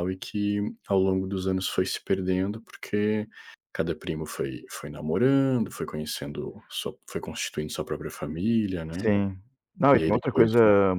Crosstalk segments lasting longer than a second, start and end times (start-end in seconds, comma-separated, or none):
none